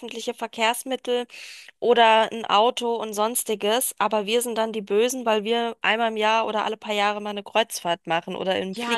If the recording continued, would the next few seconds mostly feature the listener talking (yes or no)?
yes